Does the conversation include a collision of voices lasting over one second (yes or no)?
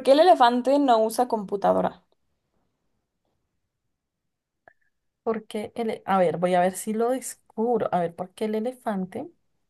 no